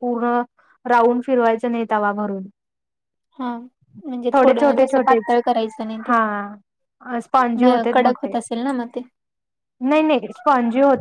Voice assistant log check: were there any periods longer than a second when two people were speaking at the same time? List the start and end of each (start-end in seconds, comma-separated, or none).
none